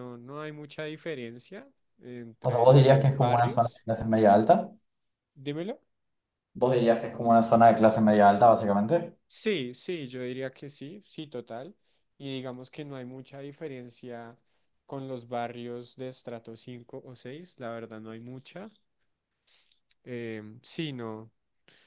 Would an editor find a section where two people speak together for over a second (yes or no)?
yes